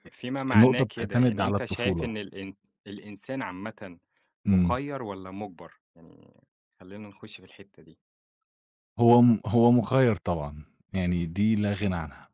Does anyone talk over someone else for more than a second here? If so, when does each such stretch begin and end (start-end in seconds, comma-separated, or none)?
0.6-2.1